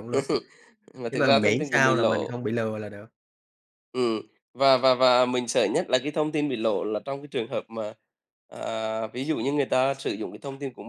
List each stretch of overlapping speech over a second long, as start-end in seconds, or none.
1.1-2.3